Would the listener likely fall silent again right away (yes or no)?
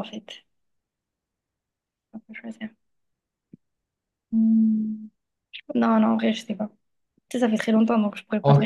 no